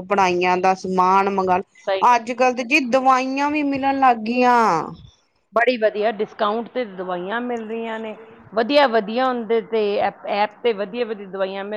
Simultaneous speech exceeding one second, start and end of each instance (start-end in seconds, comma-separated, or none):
none